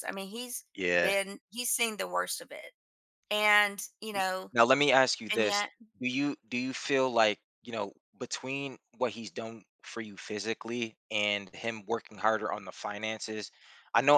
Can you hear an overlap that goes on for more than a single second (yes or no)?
no